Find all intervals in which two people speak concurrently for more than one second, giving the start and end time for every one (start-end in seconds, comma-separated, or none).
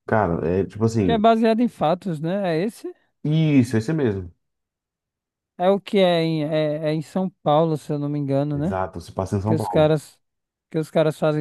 none